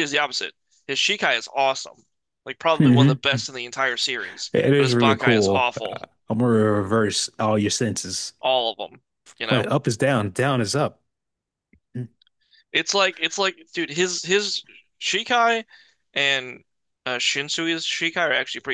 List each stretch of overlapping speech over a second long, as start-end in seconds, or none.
4.5-6.0